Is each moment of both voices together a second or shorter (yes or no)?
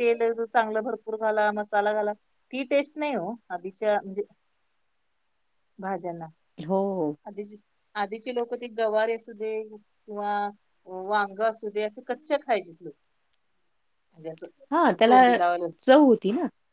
yes